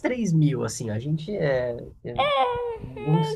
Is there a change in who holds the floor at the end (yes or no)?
yes